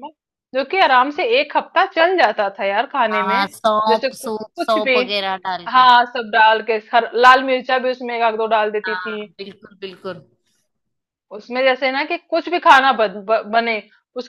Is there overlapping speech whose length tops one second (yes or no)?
yes